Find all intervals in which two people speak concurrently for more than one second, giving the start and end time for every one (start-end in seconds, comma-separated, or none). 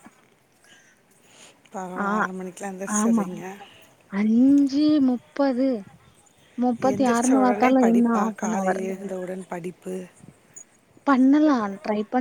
6.9-8.8